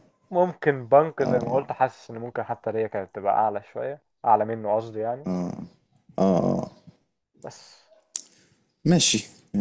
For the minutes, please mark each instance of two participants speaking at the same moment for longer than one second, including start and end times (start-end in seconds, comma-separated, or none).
none